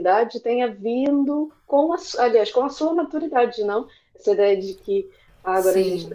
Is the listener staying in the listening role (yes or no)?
yes